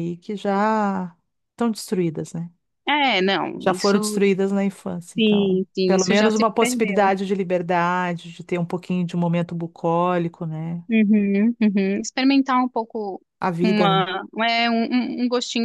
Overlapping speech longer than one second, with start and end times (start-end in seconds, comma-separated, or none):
5.2-7.2